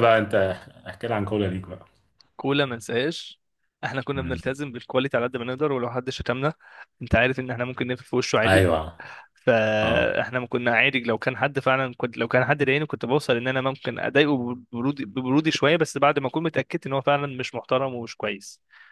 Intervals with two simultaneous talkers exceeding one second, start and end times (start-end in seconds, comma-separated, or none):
none